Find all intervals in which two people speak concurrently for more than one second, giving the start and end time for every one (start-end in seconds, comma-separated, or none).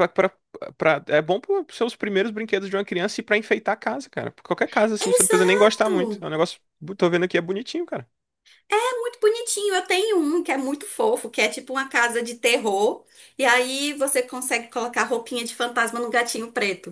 5.0-6.3